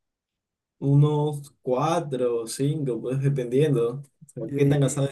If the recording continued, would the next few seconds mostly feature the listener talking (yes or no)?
no